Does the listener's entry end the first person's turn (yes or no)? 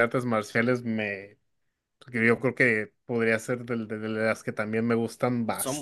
no